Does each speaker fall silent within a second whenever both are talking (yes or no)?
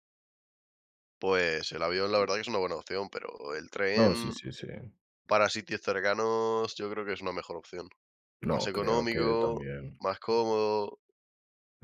no